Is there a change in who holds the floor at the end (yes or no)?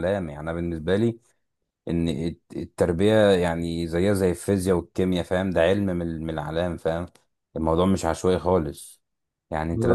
no